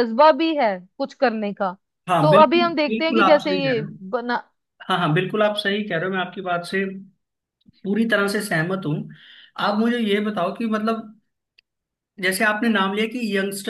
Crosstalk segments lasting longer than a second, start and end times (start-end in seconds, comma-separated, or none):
2.2-3.9